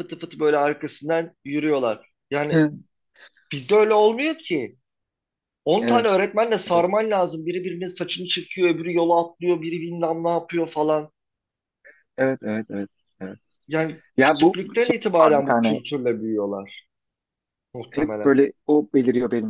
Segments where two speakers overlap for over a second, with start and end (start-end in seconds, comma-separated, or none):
14.2-15.8